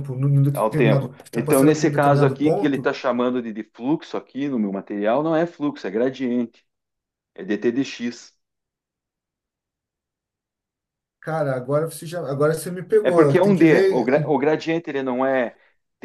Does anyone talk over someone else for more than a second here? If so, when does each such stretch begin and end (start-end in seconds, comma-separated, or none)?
0.5-2.9, 13.0-14.4